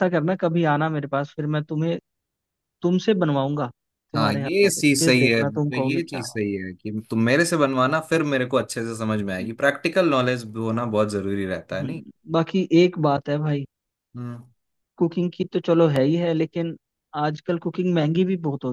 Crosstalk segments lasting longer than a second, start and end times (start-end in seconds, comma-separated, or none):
4.2-6.4